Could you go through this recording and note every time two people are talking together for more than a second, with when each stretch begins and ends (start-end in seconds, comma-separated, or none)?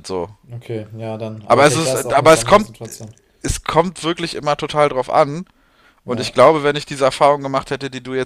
1.5-2.7